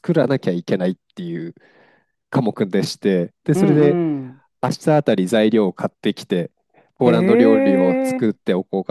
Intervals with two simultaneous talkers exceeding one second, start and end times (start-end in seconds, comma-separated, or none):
7.0-8.3